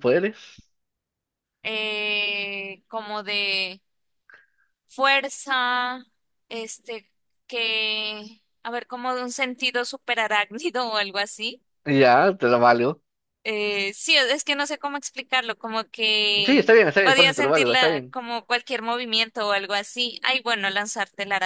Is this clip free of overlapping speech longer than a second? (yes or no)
no